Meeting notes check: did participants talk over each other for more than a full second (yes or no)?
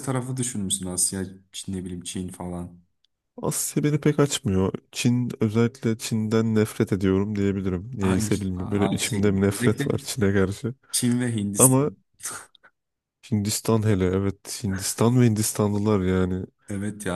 yes